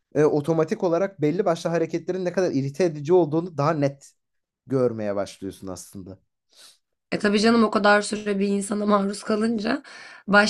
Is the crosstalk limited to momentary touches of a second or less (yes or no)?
yes